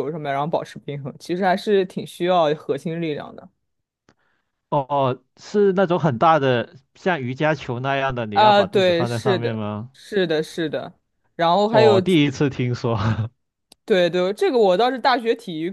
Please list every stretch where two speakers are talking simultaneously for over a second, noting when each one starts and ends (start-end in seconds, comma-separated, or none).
8.3-9.9